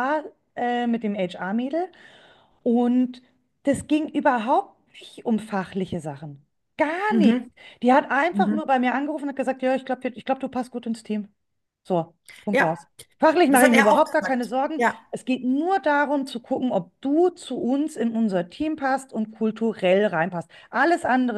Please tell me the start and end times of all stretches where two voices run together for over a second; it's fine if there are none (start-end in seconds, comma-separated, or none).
13.5-15.0